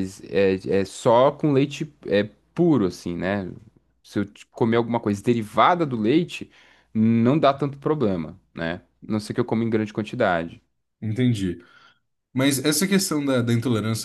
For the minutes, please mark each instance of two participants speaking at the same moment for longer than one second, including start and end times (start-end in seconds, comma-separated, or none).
none